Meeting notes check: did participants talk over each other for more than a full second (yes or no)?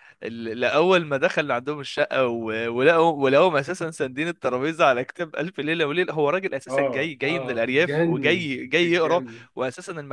yes